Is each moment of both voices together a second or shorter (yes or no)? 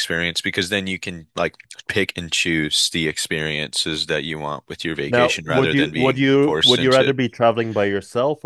no